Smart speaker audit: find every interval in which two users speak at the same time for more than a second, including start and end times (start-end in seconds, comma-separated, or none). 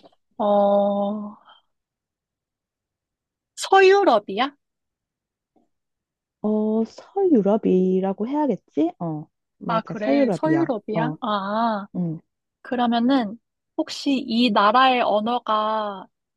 9.7-11.2